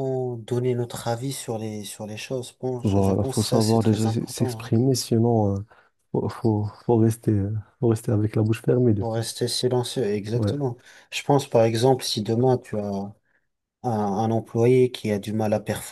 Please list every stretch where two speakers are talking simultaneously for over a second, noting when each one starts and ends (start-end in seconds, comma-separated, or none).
2.8-4.7